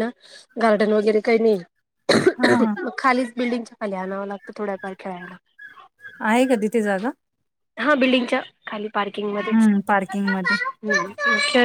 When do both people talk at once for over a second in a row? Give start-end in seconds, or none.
none